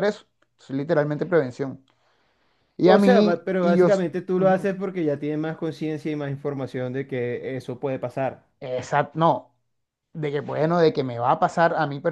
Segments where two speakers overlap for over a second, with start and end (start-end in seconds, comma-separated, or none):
2.8-4.7